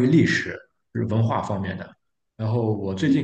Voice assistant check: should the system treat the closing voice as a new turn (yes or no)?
no